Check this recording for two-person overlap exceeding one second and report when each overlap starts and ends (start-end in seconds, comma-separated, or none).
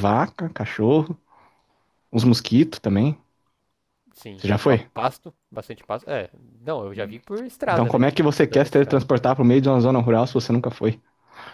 7.7-9.0